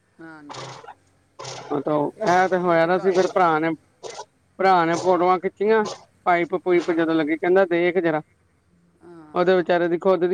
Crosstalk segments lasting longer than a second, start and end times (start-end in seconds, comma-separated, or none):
none